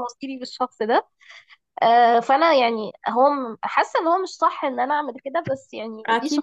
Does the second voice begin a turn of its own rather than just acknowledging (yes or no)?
yes